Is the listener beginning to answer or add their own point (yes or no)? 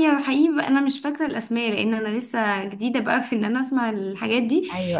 no